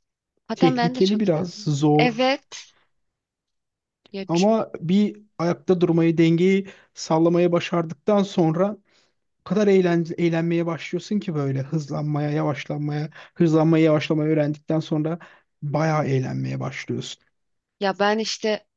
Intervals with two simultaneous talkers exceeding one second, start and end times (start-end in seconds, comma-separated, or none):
0.6-2.4